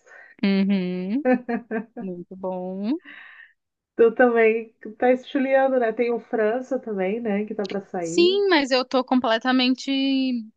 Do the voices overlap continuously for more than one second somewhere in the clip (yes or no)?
no